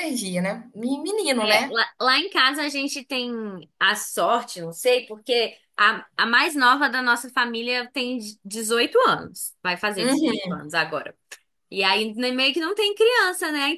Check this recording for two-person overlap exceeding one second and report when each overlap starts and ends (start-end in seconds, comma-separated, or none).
none